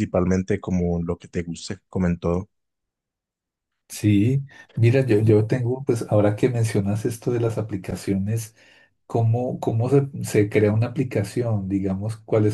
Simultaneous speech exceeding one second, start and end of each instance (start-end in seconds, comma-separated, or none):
none